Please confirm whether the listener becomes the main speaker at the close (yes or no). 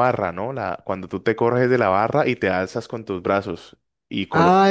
yes